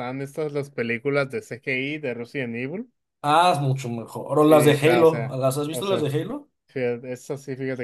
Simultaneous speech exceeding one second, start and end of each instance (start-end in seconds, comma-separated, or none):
4.4-6.1